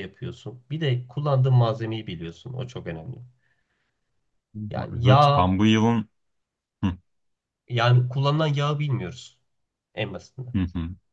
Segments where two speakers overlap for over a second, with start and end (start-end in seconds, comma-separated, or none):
none